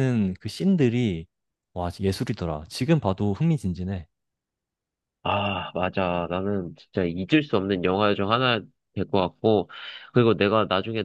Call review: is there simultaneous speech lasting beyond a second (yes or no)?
no